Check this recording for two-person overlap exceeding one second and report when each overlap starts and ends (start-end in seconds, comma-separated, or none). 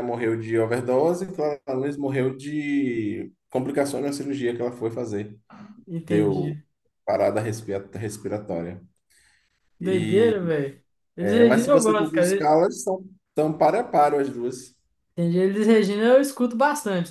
11.2-12.5